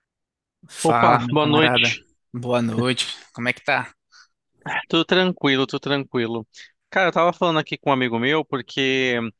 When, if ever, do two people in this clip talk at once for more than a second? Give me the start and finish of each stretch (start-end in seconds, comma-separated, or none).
0.8-2.0